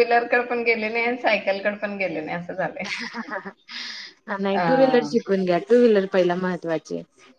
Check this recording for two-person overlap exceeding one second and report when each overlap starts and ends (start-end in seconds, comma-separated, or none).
none